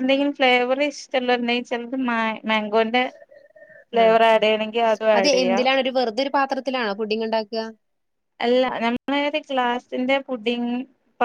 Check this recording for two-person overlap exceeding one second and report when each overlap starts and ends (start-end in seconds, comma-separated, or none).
none